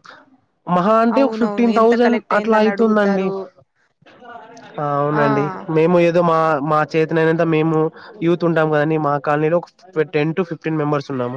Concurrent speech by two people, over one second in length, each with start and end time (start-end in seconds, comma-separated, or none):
1.1-3.3